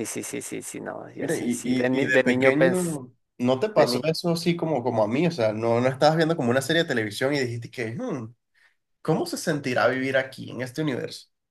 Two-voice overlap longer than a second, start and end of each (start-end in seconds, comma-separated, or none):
1.2-3.0